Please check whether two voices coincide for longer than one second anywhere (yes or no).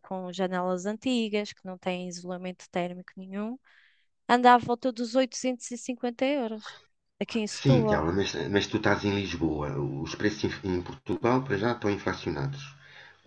no